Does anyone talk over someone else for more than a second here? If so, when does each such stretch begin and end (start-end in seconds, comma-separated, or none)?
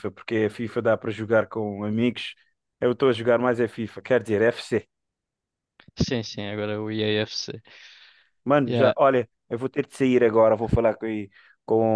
none